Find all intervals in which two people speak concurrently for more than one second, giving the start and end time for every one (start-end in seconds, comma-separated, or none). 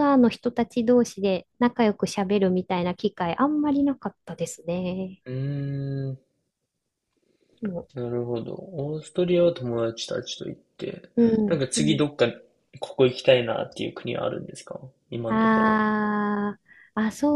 none